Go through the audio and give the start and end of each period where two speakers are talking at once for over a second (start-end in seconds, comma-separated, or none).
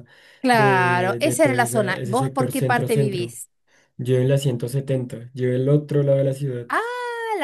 0.5-3.4